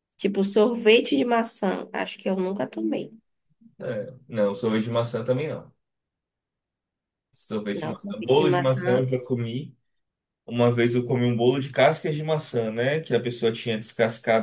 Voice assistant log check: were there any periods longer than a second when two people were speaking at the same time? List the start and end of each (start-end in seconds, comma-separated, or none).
7.7-9.0